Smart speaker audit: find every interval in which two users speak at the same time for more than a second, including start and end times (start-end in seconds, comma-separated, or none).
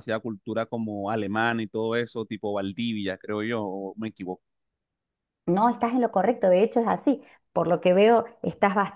none